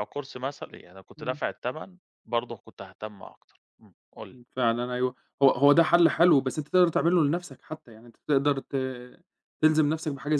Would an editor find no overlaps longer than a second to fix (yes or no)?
yes